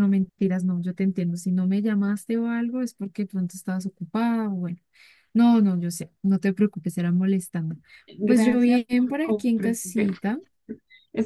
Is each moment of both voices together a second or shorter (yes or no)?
no